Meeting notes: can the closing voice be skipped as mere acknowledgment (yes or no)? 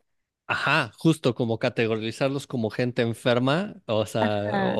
yes